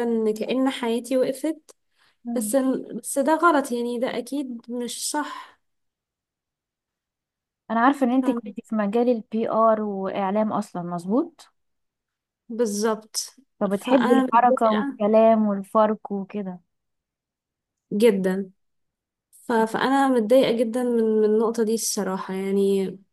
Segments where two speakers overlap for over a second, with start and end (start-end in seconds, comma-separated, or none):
13.6-15.0